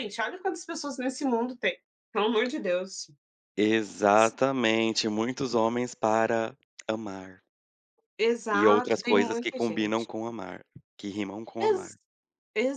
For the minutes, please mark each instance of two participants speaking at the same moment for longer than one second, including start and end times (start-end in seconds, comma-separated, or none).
8.5-10.0